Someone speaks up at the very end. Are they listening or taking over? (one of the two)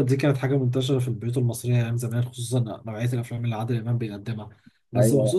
listening